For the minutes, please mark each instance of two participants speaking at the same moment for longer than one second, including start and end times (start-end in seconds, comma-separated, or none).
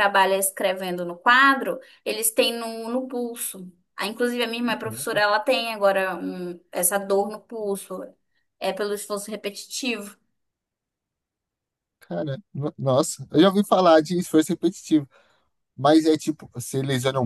none